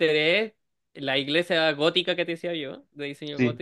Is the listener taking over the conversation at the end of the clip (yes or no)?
no